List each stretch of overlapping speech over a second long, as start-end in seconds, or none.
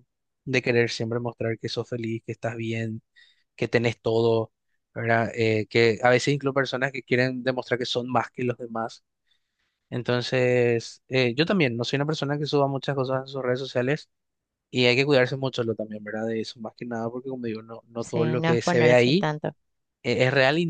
18.0-19.3